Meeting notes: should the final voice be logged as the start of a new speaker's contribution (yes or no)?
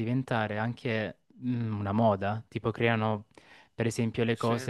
no